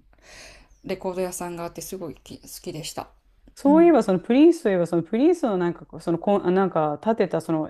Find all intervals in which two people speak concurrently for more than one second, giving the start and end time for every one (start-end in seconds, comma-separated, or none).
none